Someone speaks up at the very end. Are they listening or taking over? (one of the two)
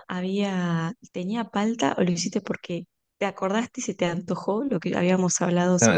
taking over